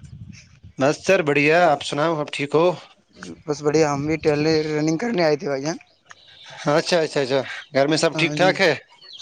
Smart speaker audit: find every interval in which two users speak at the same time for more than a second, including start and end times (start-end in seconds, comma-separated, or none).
none